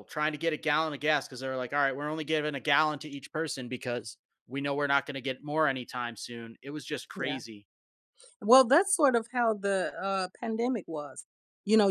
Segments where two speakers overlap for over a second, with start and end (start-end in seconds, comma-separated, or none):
none